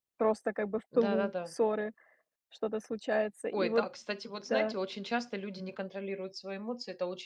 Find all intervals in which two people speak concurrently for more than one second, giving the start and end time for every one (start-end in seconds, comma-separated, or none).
none